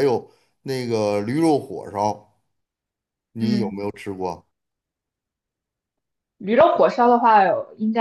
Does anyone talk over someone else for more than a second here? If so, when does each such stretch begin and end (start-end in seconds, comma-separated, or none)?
none